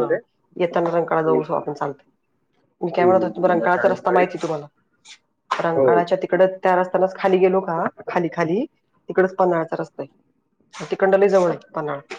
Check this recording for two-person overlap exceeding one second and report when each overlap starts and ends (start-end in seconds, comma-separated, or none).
3.0-4.2